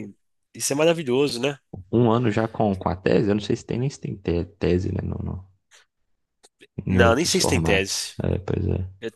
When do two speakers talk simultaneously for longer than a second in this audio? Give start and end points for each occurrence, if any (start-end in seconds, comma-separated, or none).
6.9-8.1